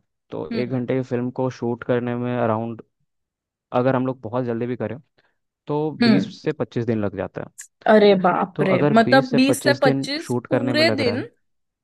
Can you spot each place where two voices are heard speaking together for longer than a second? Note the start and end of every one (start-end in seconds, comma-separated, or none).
8.6-11.2